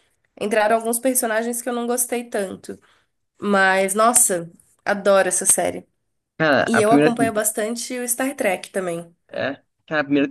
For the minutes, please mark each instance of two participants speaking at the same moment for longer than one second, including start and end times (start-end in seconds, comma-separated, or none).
none